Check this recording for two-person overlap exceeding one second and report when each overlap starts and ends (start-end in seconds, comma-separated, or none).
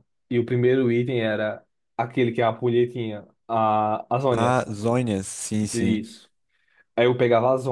none